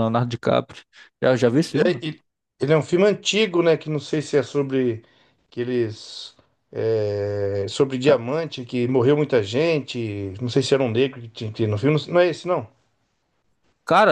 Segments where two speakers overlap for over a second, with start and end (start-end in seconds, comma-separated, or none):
none